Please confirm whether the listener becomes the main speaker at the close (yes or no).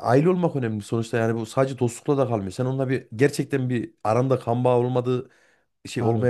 no